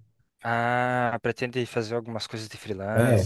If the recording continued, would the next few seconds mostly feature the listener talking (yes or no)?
yes